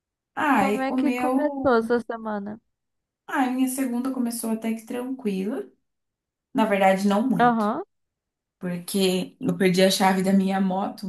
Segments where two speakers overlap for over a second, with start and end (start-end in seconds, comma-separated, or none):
0.5-2.0